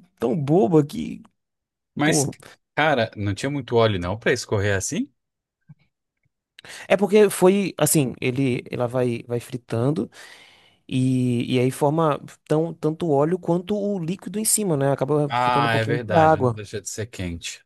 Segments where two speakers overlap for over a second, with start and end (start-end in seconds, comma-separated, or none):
15.3-16.6